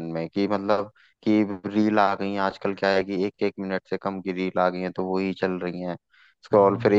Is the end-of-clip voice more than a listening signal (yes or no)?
no